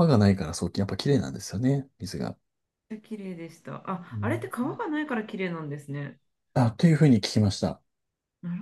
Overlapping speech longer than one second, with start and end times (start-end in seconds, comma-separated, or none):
none